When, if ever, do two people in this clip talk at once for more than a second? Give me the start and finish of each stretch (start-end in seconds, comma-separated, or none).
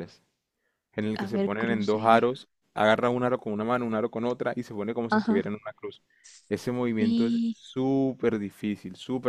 1.1-2.5